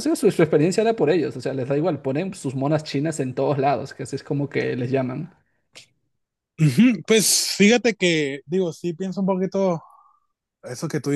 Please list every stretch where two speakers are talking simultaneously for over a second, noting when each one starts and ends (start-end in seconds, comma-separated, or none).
none